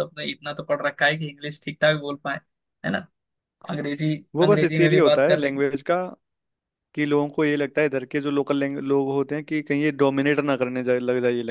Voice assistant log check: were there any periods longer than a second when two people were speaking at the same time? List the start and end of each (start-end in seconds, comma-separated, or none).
4.3-5.6